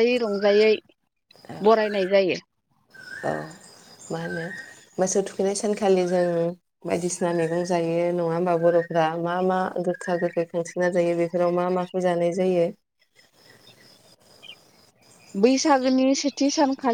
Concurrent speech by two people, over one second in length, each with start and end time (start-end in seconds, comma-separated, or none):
none